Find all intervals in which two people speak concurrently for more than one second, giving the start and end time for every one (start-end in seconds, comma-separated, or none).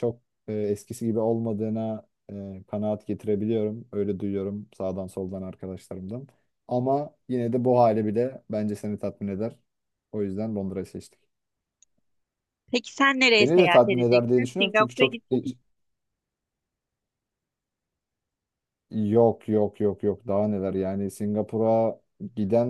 13.4-15.4